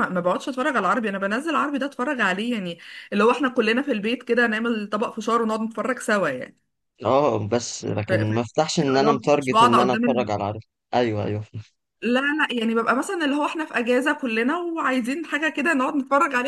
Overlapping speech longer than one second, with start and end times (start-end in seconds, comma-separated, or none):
8.9-10.3